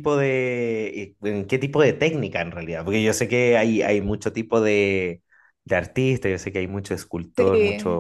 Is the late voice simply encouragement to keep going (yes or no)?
yes